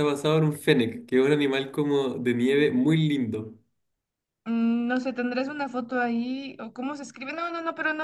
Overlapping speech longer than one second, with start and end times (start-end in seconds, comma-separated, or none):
none